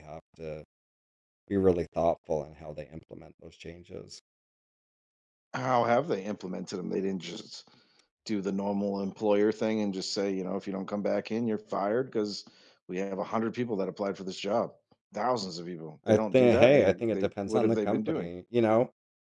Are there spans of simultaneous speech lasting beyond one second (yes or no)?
yes